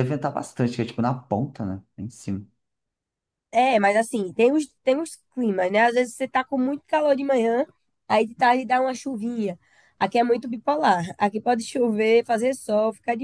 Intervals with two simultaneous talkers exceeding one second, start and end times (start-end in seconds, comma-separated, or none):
none